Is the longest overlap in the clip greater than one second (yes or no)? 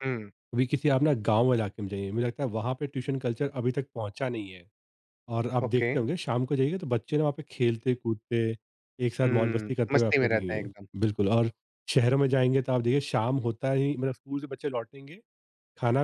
yes